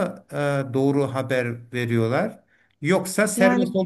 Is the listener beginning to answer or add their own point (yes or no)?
no